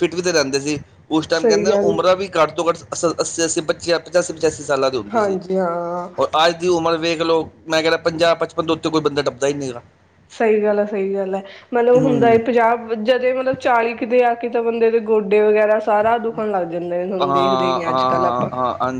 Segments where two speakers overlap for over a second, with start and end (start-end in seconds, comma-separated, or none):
17.2-18.5